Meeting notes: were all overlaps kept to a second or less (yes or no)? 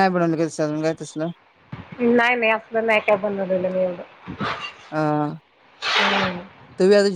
yes